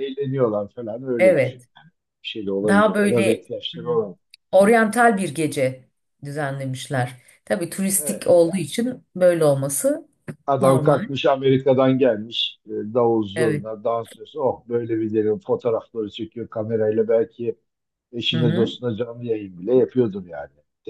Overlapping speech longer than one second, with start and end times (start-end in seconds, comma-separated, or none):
2.7-4.0